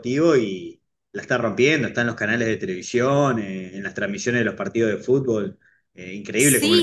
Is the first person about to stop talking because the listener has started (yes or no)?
yes